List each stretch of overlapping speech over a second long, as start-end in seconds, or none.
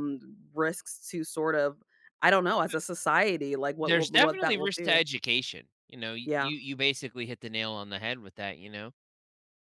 3.8-5.0